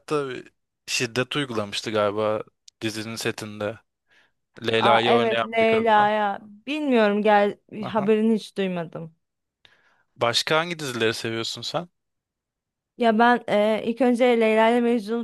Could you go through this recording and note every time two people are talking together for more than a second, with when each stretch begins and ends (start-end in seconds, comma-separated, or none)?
4.8-6.1